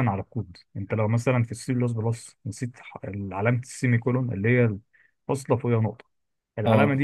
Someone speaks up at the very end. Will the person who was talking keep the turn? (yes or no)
yes